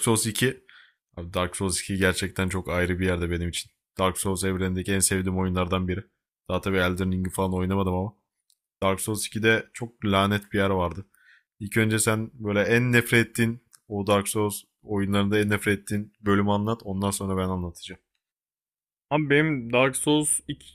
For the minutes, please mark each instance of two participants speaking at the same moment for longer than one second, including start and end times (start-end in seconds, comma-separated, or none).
none